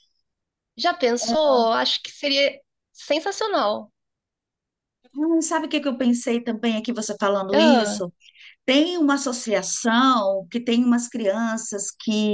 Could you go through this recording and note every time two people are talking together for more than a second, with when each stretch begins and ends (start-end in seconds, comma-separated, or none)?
none